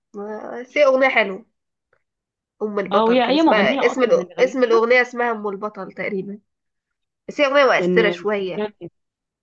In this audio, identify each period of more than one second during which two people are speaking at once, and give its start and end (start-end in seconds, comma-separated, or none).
2.9-4.8